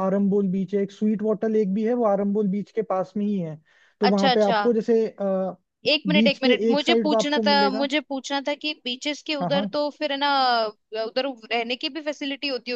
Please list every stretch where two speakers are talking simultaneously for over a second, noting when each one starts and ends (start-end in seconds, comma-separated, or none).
6.1-7.9